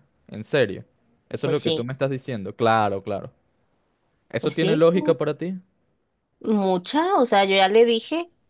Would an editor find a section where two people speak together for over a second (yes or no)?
no